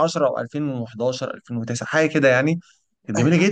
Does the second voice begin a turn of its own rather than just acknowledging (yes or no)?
yes